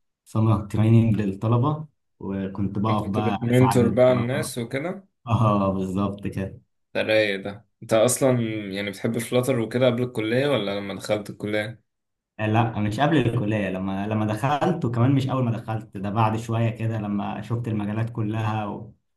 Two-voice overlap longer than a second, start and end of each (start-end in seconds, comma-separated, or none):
2.9-4.5